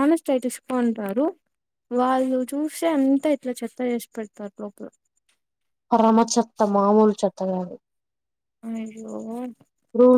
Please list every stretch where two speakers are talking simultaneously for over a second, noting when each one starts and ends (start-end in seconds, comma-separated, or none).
none